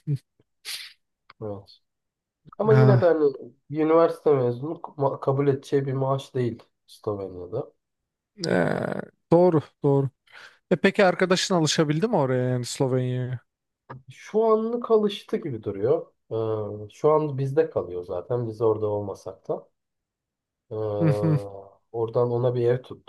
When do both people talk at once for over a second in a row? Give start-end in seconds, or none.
none